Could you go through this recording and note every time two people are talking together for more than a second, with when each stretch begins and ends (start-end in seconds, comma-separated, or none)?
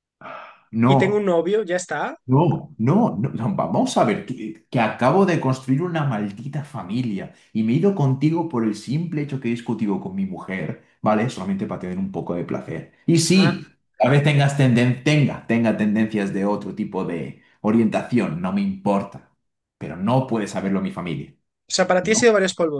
none